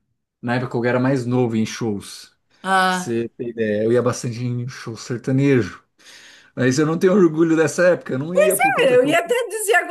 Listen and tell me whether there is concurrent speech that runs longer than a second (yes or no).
no